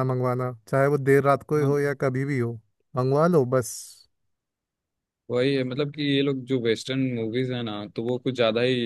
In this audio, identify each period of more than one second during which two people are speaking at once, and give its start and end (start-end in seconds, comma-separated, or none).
none